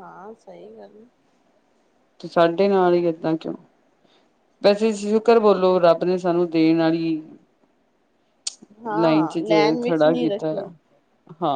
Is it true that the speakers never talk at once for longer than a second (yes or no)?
no